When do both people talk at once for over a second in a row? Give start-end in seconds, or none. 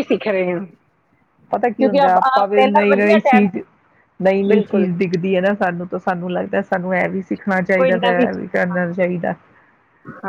7.8-9.2